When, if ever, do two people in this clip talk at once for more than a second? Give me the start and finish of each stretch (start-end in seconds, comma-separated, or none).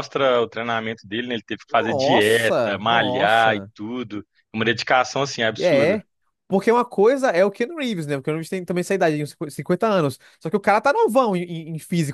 1.7-3.7